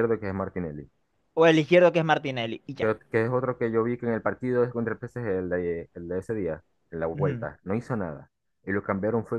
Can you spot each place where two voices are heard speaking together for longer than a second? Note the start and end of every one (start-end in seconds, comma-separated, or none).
none